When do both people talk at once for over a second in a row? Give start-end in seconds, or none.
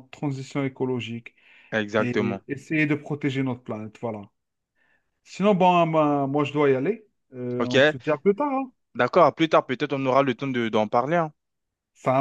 none